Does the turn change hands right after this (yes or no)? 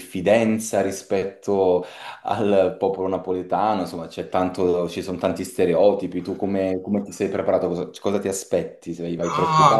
yes